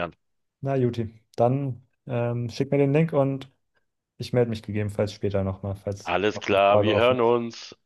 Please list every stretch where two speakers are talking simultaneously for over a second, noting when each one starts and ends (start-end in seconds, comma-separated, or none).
6.0-7.3